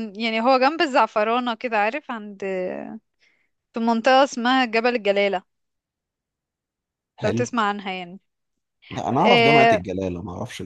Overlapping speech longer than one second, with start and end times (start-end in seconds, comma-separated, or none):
none